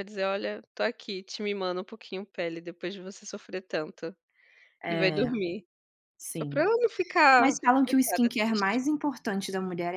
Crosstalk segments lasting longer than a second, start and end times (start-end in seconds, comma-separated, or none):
7.4-8.8